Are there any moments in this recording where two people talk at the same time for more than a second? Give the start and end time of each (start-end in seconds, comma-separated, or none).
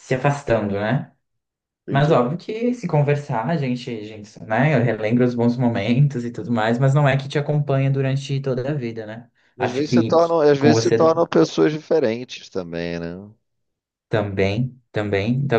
9.6-11.0